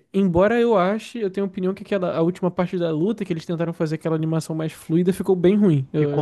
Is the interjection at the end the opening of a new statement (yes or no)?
yes